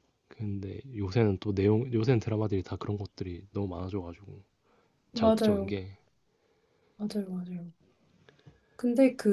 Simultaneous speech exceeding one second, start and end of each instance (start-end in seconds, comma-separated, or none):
none